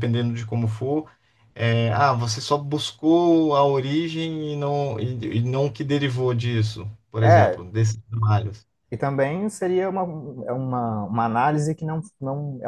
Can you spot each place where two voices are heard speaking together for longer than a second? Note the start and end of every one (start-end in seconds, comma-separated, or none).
none